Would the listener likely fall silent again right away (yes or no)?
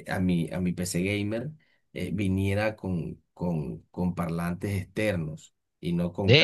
no